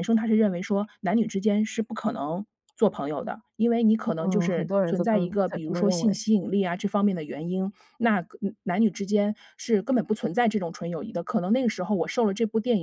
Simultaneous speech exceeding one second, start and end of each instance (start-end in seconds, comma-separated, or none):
4.2-6.2